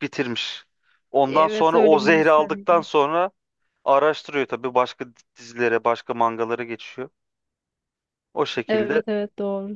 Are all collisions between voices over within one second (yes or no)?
no